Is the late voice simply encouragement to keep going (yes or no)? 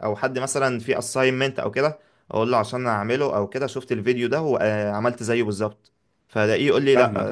yes